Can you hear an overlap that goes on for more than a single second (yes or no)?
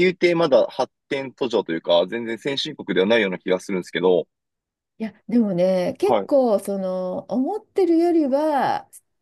no